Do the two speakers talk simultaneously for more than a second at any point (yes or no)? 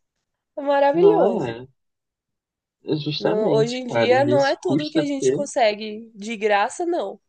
yes